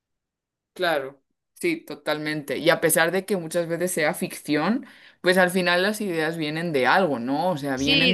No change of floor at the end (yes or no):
no